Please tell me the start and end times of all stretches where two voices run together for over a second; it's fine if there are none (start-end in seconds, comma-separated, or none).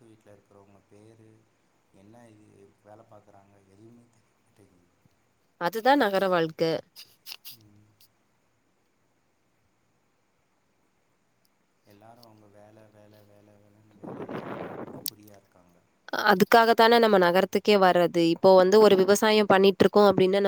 none